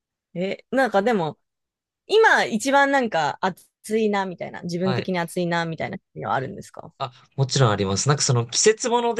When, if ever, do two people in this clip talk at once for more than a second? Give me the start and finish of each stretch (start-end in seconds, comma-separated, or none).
none